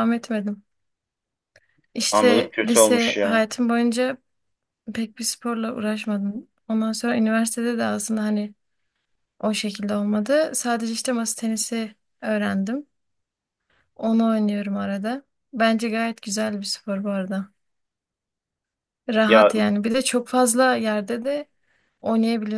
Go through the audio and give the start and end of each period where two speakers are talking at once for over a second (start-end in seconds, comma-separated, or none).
2.1-3.4